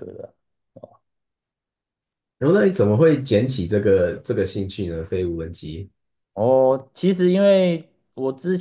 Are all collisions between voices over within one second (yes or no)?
yes